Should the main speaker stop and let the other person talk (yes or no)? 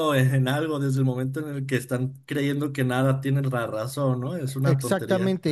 yes